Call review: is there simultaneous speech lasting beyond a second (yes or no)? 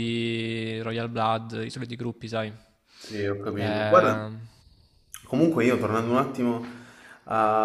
no